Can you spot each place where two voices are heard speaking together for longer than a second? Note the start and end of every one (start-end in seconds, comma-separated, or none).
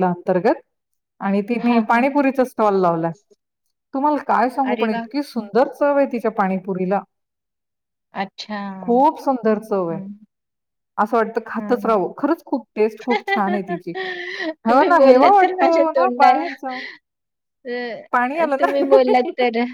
14.7-16.5